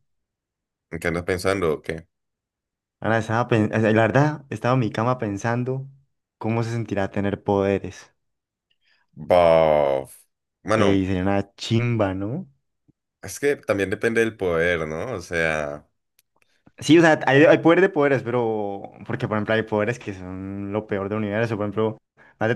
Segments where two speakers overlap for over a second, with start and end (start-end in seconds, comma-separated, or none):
none